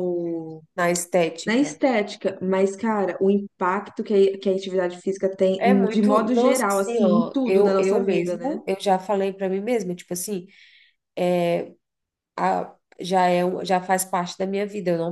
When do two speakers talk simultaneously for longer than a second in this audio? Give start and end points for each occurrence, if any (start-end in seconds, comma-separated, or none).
5.6-8.6